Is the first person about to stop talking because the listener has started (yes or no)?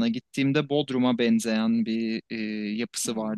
no